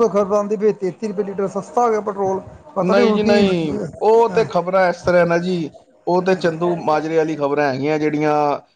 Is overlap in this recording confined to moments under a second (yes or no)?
yes